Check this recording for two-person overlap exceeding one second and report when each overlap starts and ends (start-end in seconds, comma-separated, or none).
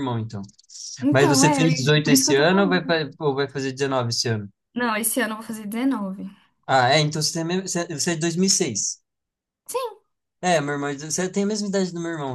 1.1-3.0